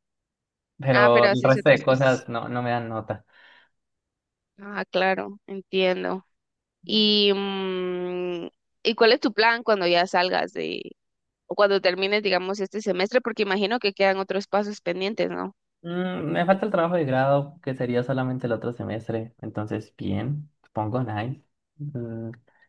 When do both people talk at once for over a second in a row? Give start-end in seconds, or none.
0.9-2.2